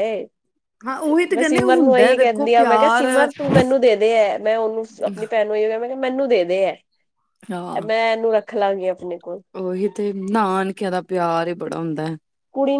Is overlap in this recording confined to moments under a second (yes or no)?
no